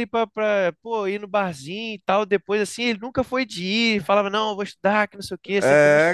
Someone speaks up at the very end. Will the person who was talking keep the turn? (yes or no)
no